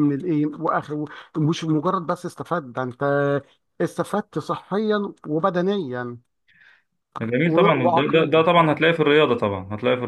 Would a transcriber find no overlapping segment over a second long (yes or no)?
no